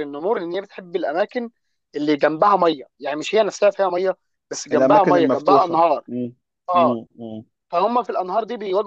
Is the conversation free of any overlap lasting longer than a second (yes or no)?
no